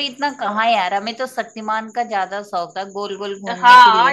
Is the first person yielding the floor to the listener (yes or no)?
yes